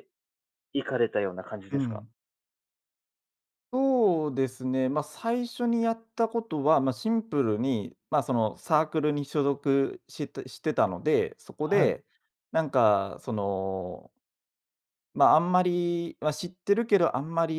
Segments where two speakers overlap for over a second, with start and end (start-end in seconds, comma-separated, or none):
none